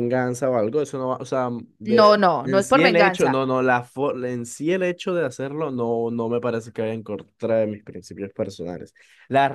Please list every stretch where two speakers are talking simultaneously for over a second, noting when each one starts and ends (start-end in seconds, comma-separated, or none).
1.9-3.4